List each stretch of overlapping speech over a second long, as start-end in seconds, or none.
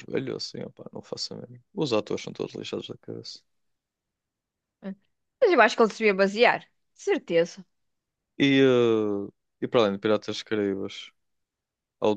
none